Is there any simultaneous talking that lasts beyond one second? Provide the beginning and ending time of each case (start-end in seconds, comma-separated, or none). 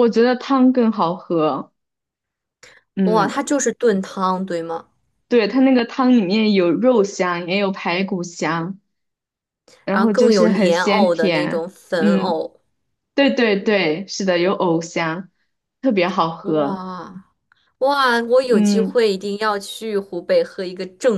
9.9-12.4